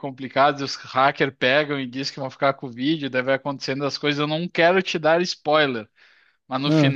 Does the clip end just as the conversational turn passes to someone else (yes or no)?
no